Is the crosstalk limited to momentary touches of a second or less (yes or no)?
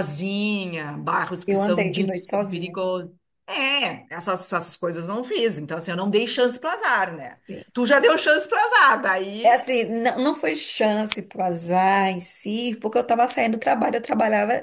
no